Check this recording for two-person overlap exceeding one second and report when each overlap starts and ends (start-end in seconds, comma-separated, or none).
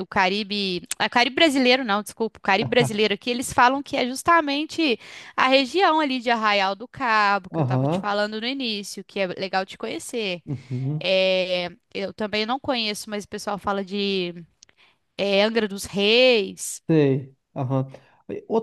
none